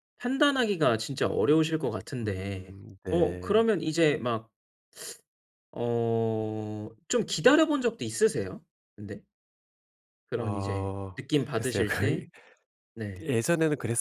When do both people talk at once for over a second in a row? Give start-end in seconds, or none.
2.2-3.7, 10.4-12.2